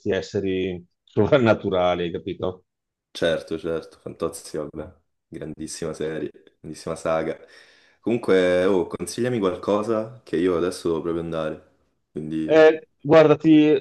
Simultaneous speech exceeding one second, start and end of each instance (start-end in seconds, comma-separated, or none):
none